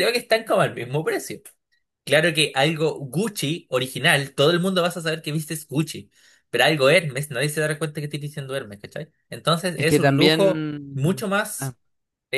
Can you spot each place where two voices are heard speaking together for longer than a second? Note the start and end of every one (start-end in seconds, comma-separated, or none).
9.7-11.8